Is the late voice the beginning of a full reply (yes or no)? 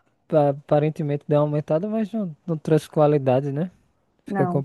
yes